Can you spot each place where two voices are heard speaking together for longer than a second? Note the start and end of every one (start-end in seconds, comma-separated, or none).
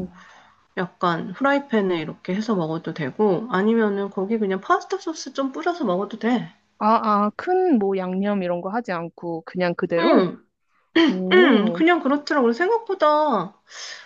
none